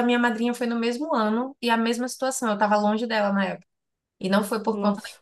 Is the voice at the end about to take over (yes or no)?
no